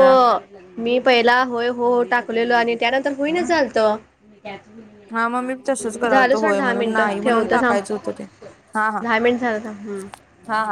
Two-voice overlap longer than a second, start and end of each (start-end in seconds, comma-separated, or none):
6.4-7.8